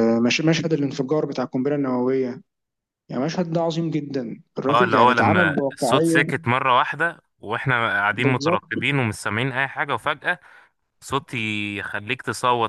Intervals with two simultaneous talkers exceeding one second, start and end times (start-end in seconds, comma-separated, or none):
4.7-6.2